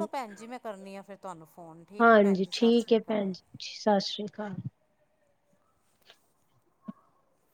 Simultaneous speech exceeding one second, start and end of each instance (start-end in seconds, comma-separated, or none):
2.0-3.3